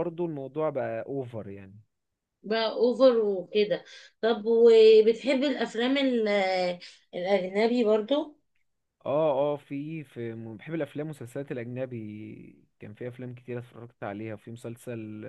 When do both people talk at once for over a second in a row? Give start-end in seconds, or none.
none